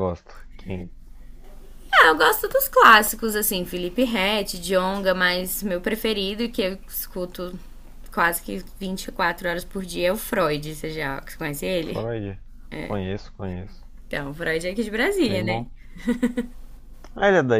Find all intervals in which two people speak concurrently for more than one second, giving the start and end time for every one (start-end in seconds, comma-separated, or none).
none